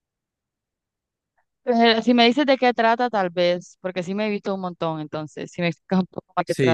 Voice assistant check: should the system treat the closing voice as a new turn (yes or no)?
yes